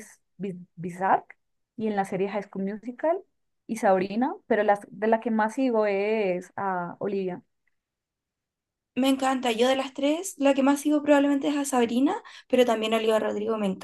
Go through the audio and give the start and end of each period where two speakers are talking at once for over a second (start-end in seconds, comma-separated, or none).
none